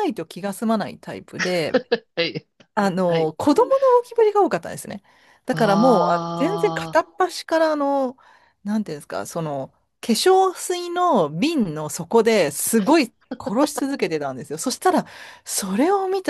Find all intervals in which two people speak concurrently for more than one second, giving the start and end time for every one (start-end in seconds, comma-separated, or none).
5.5-7.0